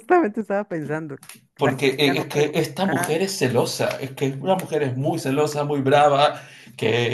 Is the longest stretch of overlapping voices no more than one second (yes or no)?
no